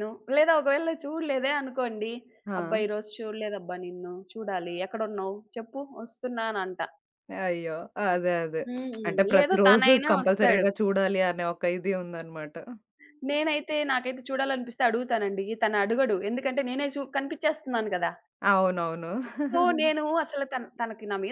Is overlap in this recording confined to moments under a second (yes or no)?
no